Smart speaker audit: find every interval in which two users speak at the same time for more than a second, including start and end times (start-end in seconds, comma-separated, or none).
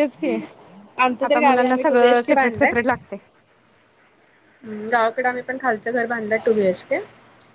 1.3-2.7